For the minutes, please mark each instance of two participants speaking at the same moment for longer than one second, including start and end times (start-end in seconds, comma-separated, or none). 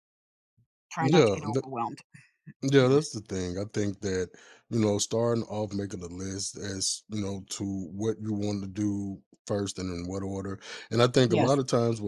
none